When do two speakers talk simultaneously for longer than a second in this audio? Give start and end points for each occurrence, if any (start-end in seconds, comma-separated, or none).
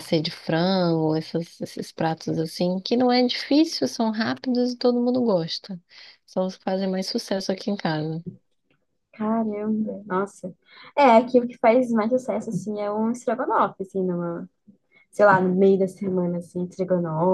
none